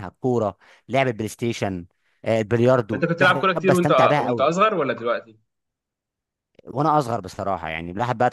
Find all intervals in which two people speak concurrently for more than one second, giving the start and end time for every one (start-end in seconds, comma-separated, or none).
2.9-4.5